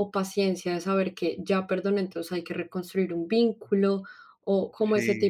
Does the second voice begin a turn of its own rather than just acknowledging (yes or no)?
no